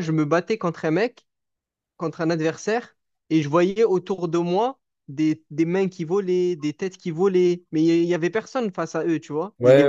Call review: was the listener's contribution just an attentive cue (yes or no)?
no